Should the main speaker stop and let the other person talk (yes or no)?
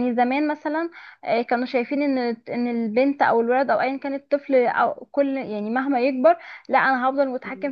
no